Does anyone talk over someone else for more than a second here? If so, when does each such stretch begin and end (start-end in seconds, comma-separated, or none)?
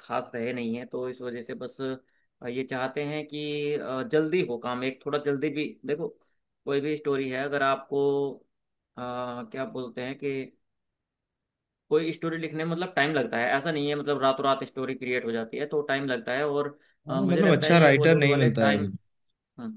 17.1-18.9